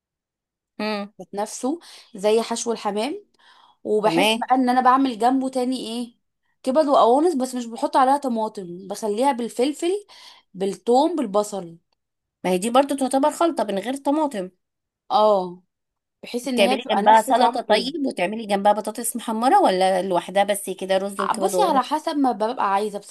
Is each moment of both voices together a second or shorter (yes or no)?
no